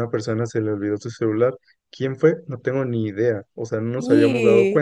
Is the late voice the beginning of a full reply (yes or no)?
no